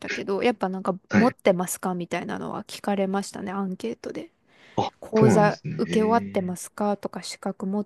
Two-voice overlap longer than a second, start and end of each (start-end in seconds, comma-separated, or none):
5.0-6.5